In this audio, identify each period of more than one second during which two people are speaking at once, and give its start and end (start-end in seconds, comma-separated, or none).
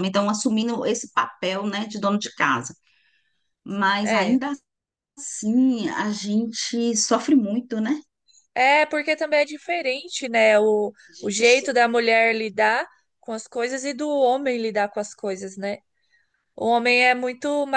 none